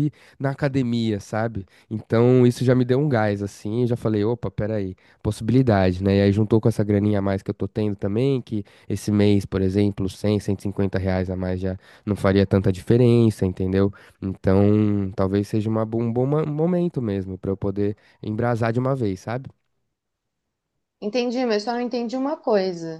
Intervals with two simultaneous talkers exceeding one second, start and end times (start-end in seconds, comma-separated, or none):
none